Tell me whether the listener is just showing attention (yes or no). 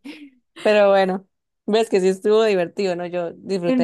no